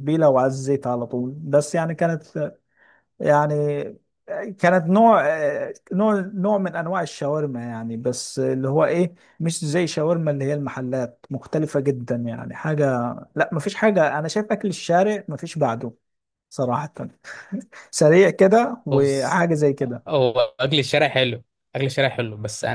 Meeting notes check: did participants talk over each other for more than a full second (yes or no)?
no